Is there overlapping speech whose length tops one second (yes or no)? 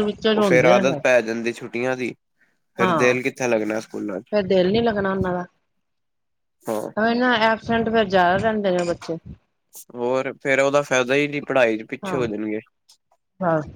yes